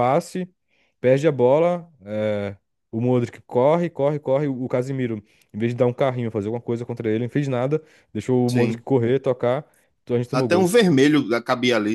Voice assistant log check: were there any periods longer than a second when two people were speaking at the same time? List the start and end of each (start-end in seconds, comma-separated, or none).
none